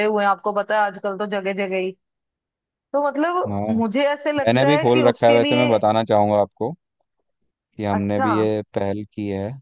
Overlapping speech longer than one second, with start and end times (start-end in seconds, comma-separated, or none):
4.4-5.7